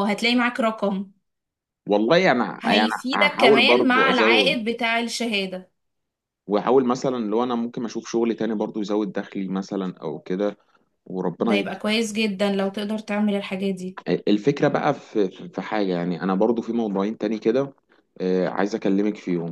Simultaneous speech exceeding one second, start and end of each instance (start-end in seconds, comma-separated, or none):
2.6-4.6